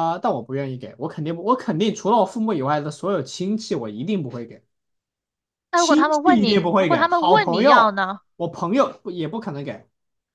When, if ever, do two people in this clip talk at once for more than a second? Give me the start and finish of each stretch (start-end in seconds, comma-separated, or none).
5.8-8.2